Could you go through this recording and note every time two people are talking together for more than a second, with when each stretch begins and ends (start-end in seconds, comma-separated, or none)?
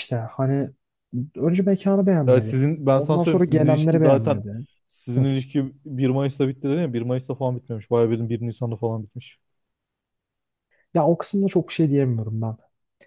2.3-4.4